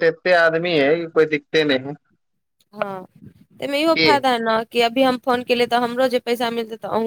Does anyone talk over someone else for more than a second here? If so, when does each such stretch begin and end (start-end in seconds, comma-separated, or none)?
none